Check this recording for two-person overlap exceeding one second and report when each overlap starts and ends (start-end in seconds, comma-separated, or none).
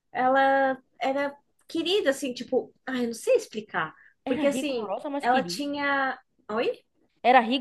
4.2-5.7